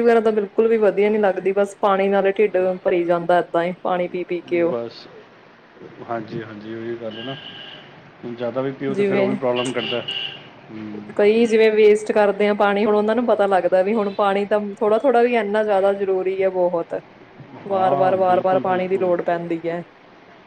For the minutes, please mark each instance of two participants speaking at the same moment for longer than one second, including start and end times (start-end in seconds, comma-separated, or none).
none